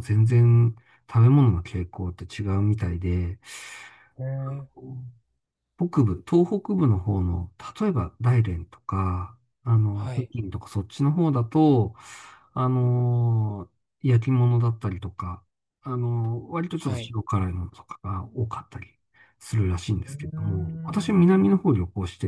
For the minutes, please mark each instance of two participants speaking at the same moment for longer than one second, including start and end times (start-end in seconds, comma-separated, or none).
19.9-21.5